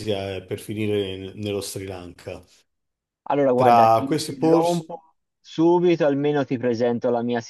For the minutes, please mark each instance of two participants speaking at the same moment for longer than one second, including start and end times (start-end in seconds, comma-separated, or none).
3.5-4.9